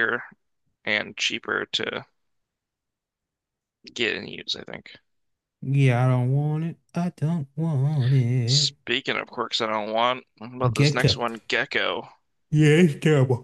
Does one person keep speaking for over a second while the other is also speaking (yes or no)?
no